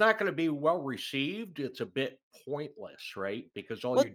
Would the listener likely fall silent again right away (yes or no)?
no